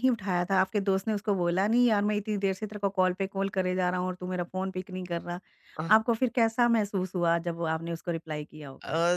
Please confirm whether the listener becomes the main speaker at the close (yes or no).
yes